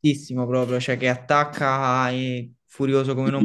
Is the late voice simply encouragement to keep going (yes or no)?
no